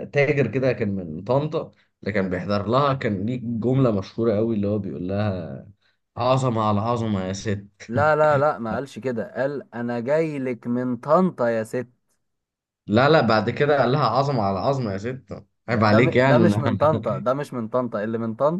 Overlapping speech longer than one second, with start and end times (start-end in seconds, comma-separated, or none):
15.7-17.0